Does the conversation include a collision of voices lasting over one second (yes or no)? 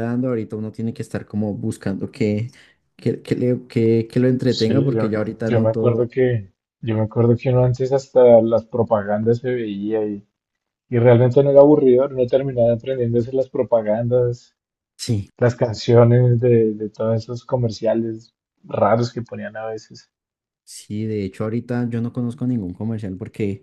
yes